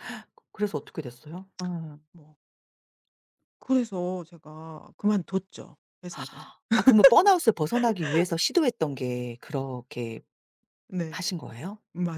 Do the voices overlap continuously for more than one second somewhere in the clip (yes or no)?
no